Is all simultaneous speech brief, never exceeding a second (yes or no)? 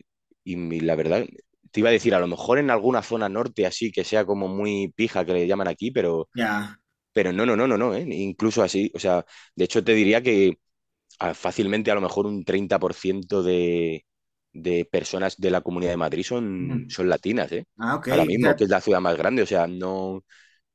yes